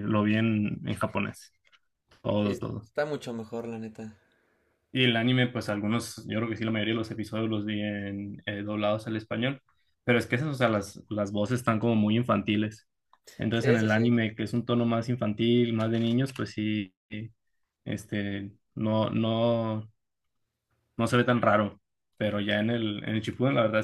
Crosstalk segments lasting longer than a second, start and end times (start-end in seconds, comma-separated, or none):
none